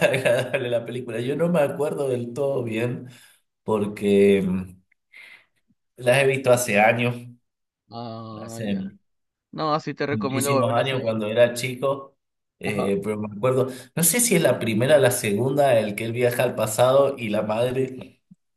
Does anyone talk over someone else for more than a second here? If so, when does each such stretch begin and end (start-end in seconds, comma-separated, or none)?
10.1-11.4